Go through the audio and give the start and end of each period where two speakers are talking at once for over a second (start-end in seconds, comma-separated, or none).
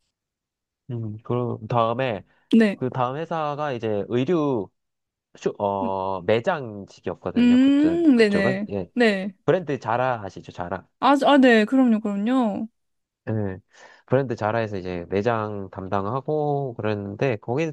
7.4-8.9